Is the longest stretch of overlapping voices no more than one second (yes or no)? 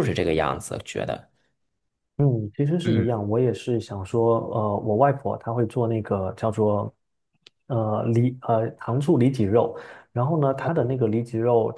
yes